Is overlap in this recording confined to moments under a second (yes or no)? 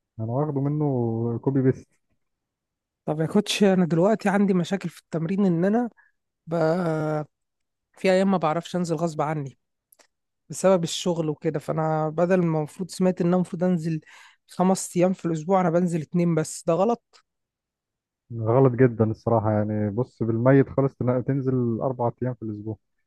yes